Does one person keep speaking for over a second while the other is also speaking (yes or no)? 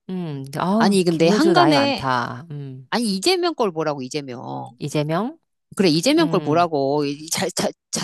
yes